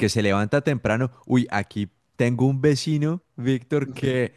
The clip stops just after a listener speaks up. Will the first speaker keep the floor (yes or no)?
yes